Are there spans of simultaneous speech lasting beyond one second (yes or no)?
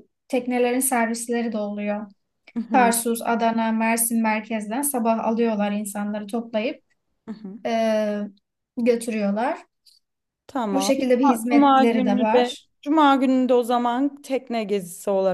yes